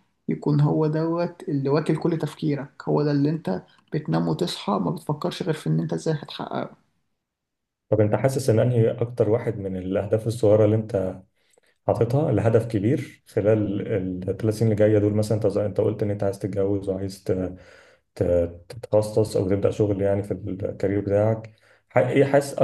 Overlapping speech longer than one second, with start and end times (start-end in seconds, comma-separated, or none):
none